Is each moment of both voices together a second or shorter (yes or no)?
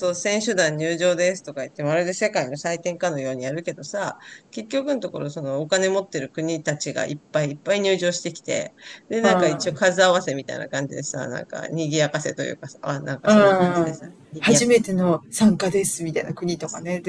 no